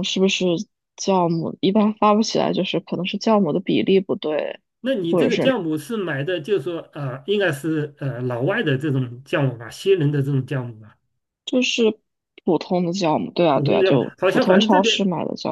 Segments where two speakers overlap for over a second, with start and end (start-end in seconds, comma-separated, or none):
13.5-15.0